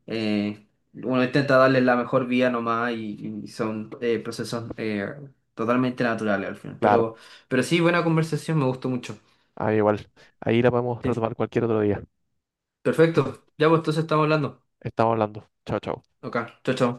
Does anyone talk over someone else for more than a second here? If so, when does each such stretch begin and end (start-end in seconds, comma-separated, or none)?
none